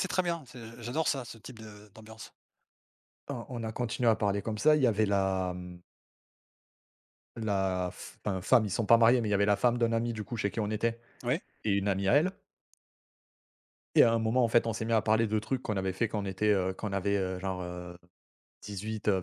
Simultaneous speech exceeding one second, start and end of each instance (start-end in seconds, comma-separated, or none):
none